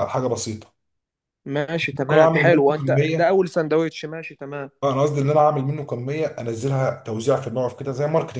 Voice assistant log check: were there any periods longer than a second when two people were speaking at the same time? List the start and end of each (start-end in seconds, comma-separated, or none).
2.0-3.4